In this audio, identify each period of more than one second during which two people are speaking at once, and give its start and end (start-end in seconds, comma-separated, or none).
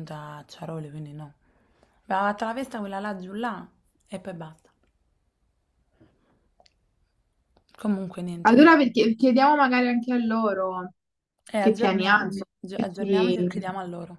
11.6-13.6